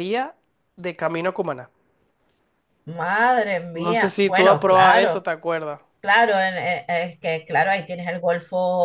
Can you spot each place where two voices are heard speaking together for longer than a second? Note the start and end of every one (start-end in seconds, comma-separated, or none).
3.7-5.2